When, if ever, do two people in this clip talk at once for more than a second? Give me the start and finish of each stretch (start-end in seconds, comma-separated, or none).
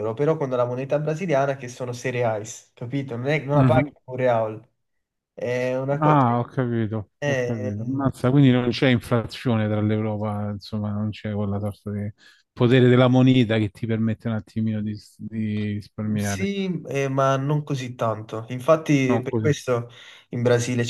none